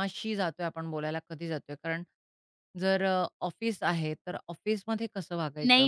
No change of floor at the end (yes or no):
no